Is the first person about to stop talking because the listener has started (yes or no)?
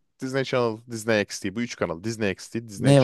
yes